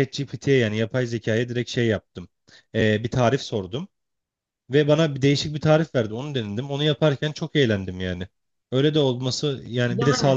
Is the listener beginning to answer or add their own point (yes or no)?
yes